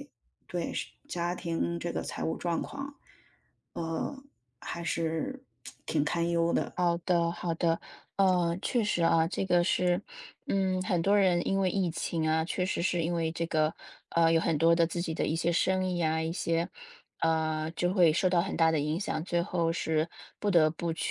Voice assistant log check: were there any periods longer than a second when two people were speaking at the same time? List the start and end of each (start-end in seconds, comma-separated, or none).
none